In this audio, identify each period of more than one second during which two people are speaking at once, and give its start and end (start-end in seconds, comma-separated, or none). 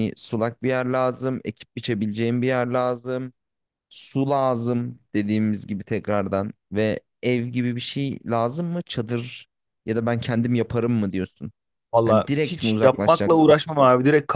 12.1-13.5